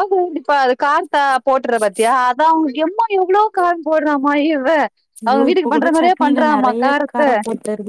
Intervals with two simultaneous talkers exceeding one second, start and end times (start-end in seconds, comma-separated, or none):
5.3-7.3